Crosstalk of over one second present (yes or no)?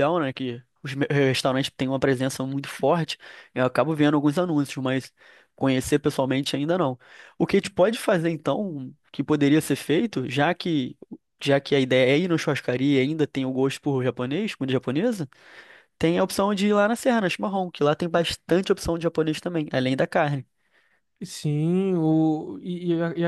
no